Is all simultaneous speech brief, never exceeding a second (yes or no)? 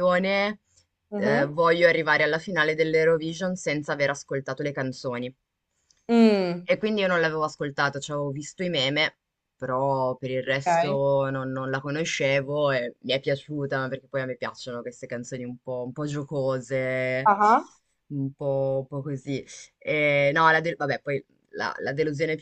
yes